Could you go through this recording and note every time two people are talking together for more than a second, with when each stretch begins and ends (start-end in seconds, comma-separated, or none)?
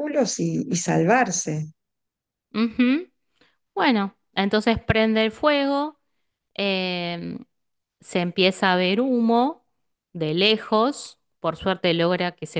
none